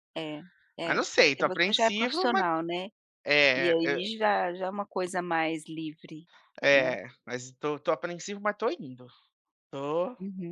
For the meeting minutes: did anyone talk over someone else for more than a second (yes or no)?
yes